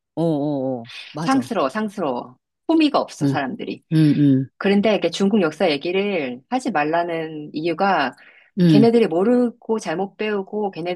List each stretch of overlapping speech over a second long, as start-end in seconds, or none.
none